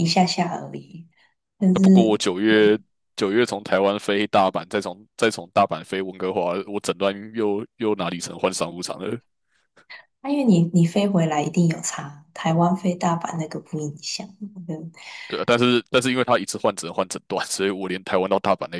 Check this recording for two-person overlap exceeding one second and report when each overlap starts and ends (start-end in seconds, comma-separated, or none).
none